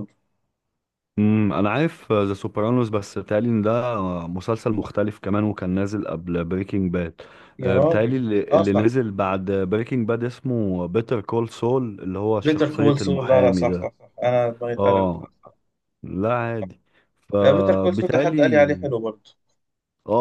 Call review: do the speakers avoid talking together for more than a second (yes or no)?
no